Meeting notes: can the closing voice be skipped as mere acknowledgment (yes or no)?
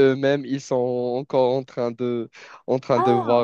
yes